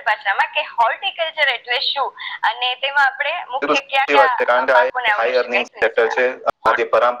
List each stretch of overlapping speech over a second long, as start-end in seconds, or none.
4.0-6.2